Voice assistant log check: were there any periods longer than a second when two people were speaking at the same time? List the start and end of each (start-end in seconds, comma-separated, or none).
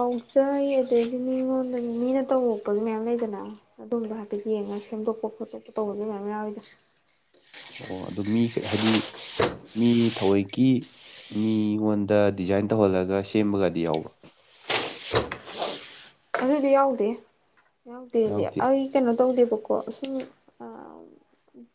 none